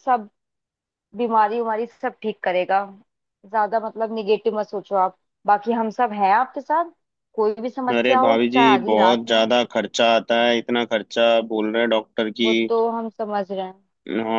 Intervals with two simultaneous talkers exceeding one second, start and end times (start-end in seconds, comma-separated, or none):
8.0-9.5